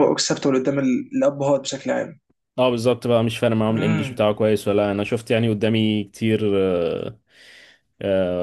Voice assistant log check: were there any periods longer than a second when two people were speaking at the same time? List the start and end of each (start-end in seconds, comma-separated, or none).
none